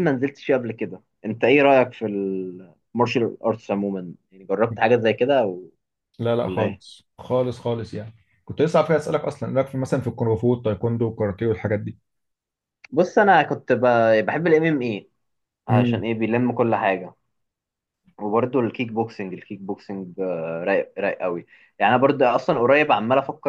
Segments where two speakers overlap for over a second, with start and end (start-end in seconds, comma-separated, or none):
none